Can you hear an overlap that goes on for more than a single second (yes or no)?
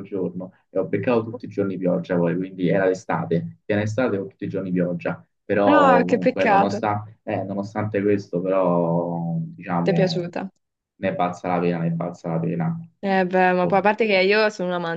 yes